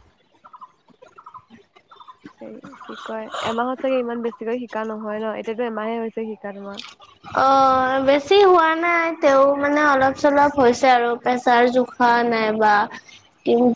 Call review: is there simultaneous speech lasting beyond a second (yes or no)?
no